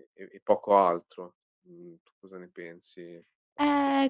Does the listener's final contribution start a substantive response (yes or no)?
yes